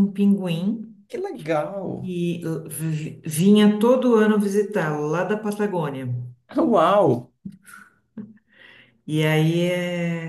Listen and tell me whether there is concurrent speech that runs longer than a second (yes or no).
no